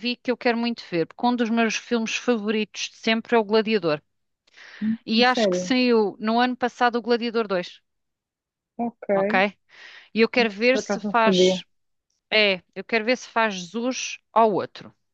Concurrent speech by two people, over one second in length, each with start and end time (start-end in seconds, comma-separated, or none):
10.4-11.6